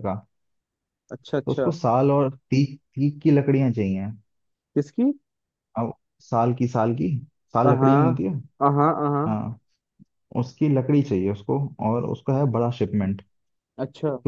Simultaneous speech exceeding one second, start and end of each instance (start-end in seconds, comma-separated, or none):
none